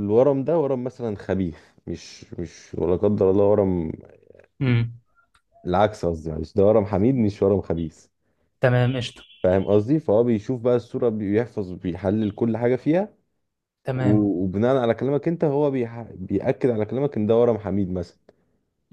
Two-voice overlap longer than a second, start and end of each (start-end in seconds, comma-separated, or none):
none